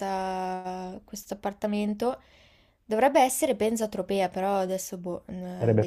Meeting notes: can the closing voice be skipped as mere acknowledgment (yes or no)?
no